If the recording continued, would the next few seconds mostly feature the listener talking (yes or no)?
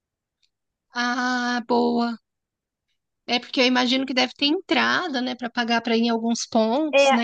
yes